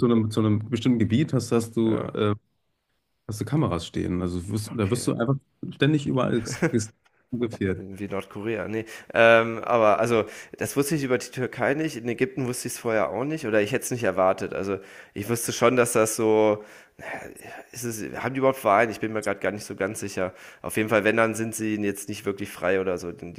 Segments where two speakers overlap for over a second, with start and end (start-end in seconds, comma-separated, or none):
none